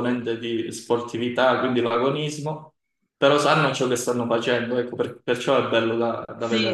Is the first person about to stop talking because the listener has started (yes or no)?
yes